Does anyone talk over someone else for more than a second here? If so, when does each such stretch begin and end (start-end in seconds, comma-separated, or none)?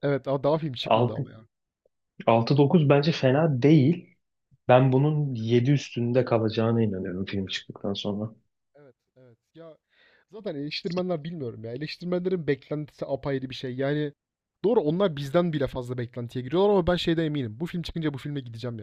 none